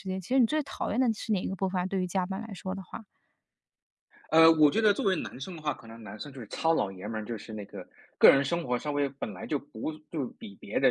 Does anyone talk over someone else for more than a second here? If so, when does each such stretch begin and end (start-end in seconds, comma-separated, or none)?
none